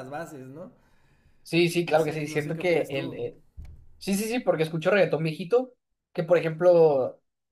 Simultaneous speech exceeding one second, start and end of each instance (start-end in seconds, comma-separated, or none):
1.9-3.2